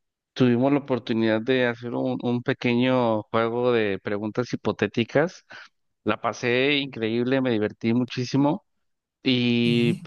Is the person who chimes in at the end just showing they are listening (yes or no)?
yes